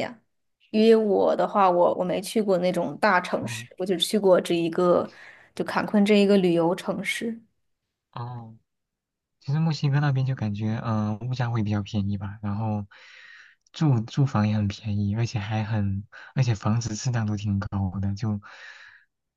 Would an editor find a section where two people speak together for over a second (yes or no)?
no